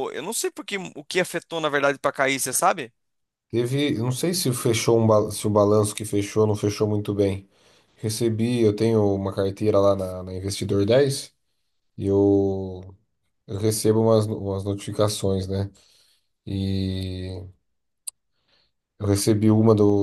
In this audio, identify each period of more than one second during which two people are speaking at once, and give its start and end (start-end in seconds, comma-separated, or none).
none